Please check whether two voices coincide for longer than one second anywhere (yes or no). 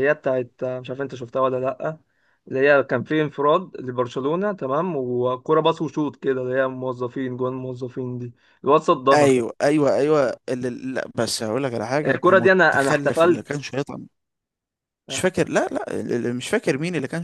yes